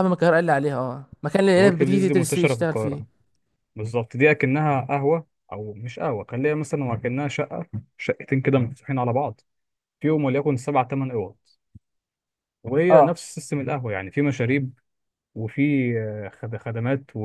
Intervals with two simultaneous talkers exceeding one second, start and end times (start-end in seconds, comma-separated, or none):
1.6-3.0